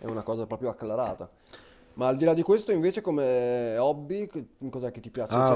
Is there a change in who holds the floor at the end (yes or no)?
yes